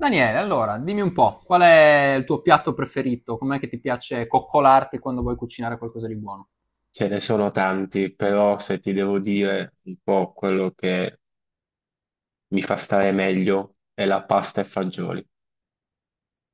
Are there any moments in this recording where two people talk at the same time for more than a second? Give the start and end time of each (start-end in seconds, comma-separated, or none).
none